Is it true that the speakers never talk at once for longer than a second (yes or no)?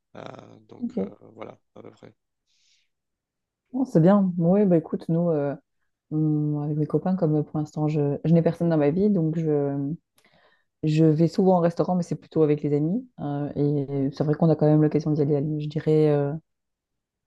yes